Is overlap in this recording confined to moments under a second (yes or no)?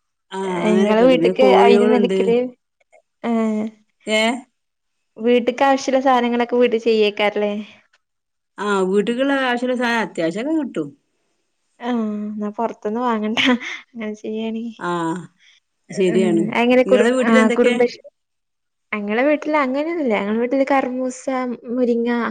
no